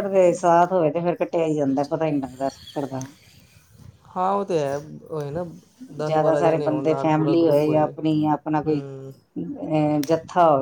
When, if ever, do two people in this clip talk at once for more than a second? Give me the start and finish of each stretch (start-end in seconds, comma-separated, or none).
6.0-7.9